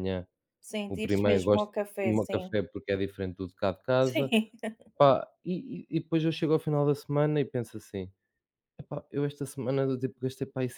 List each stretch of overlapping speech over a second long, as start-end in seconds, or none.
0.9-2.6